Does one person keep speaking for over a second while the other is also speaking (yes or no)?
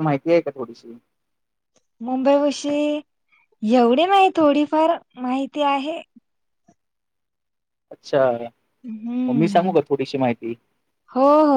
no